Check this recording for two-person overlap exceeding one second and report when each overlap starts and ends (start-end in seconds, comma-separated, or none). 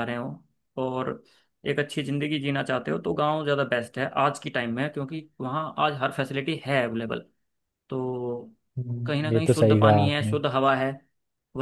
9.1-10.3